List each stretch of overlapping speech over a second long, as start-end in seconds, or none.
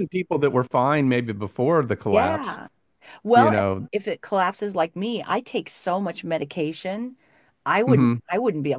none